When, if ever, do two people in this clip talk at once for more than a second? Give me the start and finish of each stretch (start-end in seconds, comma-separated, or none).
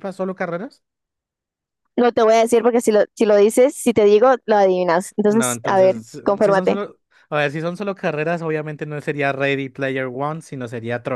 5.3-6.8